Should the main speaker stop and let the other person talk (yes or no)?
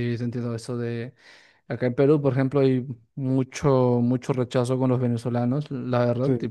no